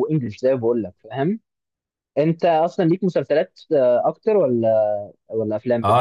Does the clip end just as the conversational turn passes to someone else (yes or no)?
yes